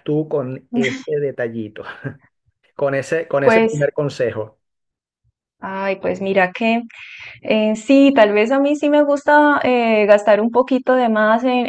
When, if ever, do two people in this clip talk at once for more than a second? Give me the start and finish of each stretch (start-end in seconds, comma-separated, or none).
none